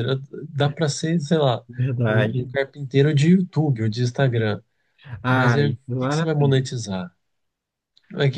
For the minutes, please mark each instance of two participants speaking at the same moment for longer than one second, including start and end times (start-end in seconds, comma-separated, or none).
5.3-6.7